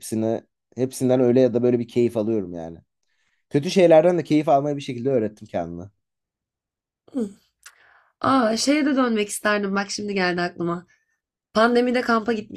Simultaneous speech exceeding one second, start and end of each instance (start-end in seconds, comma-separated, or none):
none